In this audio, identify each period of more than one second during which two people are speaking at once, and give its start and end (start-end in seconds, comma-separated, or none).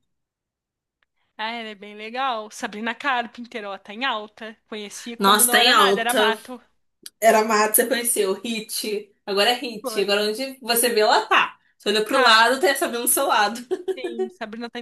5.2-6.4